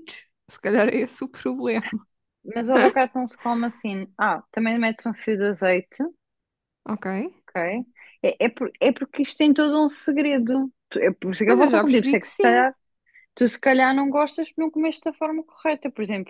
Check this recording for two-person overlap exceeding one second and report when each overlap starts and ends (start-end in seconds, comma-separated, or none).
11.4-12.7